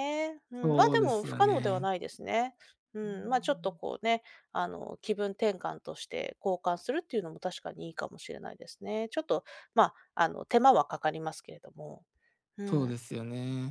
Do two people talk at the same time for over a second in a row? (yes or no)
yes